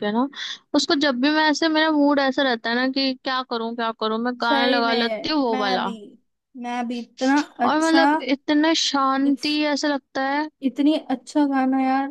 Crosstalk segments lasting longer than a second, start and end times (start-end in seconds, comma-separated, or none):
4.4-5.9